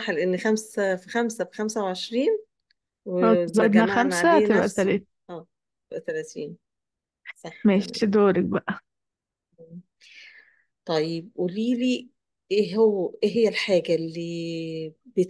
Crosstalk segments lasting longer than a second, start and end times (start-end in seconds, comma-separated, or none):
3.2-5.1